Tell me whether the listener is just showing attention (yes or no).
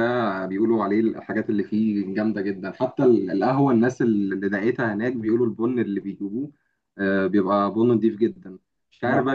yes